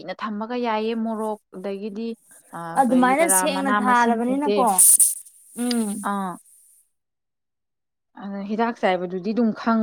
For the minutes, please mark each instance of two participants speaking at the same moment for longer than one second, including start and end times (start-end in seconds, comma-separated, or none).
2.8-4.6